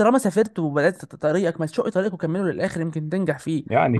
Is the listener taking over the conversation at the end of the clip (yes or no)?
yes